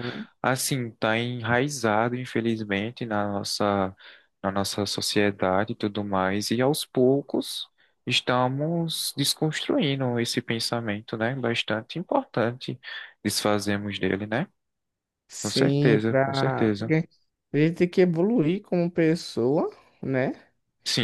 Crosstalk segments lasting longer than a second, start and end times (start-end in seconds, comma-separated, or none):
15.4-16.9